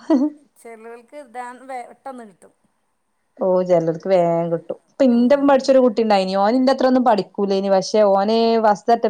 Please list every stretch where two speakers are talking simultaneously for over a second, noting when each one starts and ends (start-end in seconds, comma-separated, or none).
none